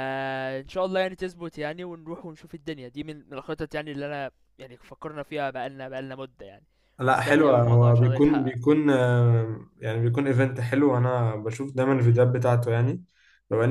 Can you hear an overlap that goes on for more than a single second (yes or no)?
yes